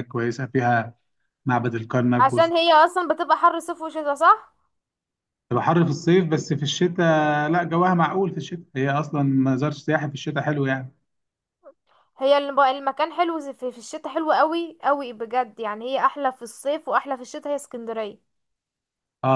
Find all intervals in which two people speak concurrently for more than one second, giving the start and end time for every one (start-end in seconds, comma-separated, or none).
none